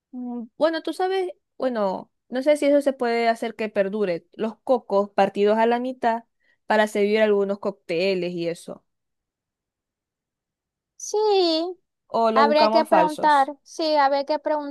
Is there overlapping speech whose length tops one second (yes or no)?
yes